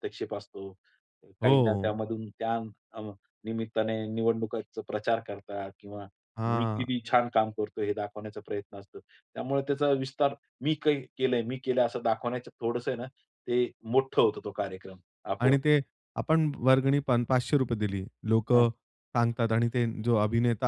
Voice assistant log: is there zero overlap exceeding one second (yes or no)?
yes